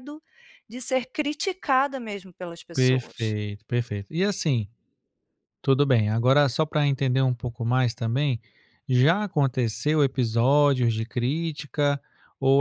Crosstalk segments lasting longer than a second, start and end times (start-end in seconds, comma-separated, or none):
none